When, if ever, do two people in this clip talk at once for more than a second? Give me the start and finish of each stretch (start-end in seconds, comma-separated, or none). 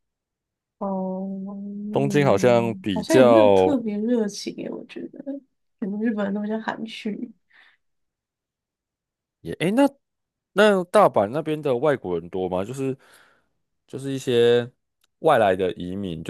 1.9-3.8